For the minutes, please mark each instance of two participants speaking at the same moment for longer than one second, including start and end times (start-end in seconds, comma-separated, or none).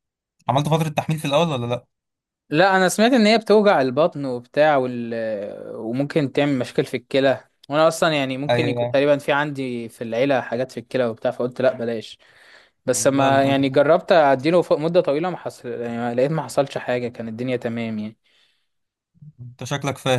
none